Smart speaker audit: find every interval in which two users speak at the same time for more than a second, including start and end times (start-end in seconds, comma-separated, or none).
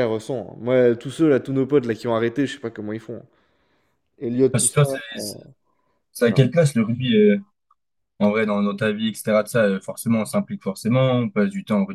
none